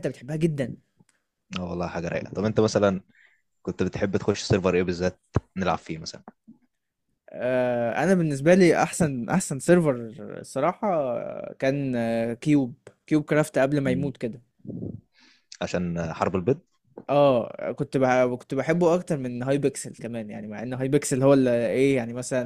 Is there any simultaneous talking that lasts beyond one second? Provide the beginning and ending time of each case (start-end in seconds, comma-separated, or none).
none